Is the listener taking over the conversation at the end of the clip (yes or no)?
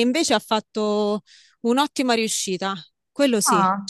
yes